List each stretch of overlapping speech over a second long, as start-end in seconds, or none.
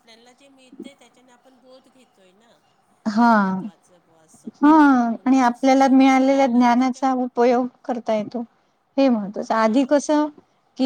5.3-7.0